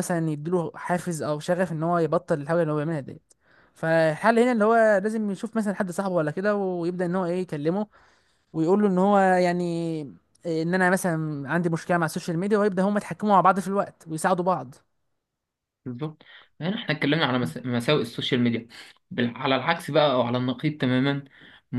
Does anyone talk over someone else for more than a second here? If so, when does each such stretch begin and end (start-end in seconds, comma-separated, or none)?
none